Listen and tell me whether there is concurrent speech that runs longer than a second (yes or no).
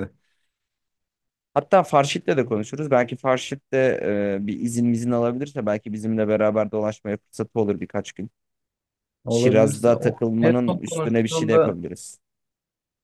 yes